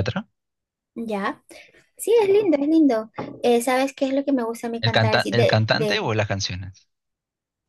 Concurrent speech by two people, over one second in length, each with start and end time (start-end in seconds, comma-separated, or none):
4.8-6.0